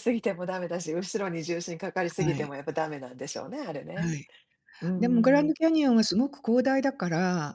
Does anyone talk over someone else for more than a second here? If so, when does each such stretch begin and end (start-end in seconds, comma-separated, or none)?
none